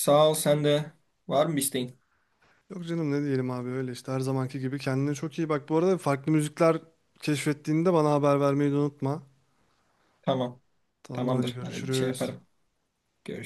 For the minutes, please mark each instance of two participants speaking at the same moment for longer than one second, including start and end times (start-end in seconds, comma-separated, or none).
11.1-12.3